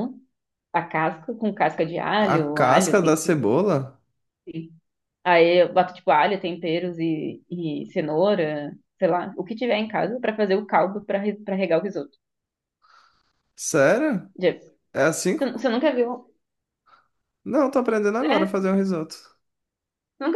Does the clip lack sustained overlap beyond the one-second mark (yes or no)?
no